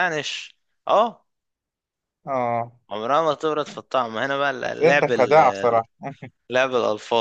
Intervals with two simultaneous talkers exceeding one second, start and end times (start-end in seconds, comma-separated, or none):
4.6-5.8